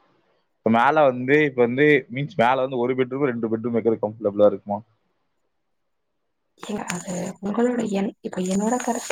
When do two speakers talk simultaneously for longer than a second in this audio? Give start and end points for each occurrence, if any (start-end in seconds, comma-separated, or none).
none